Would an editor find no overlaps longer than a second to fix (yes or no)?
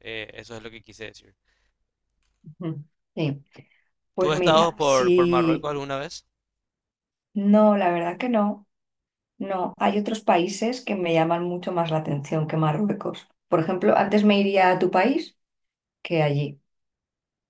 no